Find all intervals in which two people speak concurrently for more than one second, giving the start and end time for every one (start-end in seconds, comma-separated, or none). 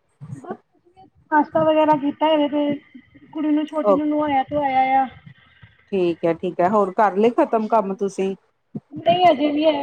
none